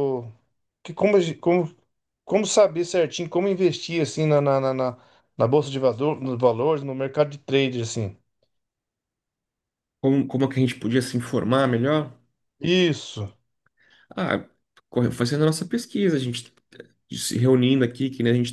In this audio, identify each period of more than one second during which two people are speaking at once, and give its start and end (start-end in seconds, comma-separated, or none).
none